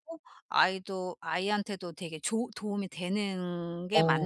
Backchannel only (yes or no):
no